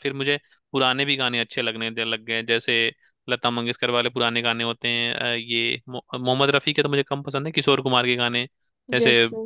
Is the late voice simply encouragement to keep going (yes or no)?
yes